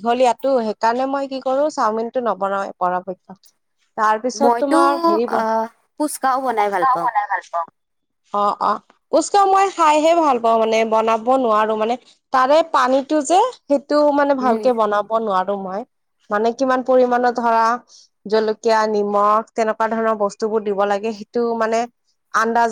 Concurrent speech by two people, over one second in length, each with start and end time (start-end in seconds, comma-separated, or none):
5.4-7.1